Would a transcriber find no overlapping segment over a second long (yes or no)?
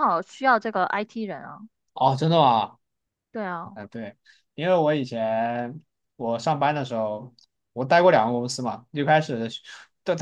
yes